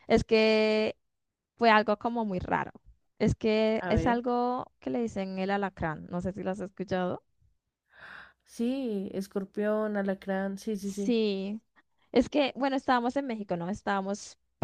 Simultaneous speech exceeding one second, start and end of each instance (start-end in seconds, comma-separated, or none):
none